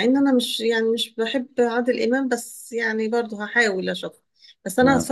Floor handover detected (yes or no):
no